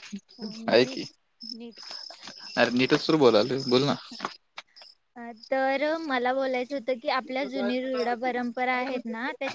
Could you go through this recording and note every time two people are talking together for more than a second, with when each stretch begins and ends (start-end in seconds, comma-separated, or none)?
none